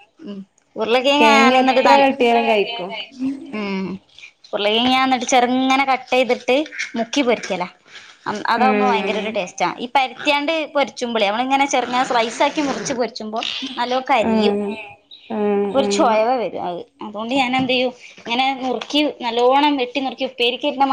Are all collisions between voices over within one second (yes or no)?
no